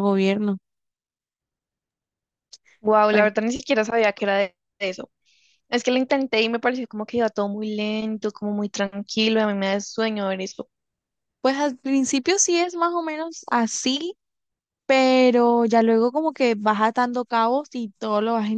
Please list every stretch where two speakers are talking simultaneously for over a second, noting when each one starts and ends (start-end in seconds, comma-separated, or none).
none